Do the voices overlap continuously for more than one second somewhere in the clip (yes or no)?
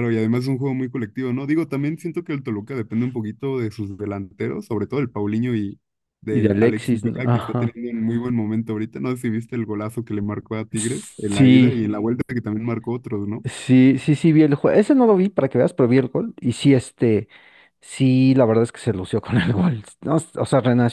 yes